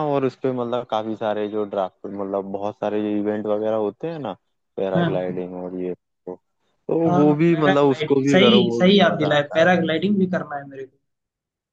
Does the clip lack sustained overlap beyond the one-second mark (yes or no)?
no